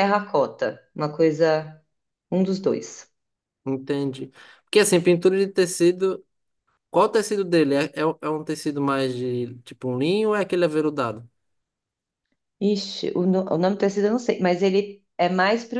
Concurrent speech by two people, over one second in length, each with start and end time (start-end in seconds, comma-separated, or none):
none